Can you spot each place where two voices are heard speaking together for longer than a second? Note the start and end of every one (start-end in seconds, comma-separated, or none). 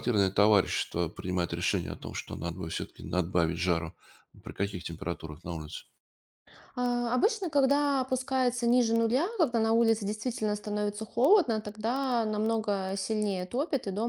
none